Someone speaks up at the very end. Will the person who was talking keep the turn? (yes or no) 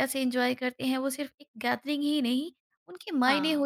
yes